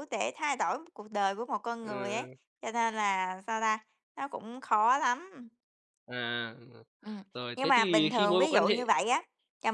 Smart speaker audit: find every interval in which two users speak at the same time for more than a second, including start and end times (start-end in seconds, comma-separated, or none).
7.3-8.7